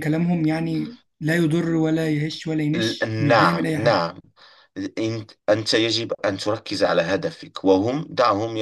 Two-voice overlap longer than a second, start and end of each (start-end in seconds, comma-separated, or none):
2.8-4.0